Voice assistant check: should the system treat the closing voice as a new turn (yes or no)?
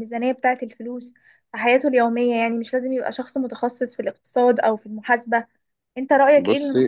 no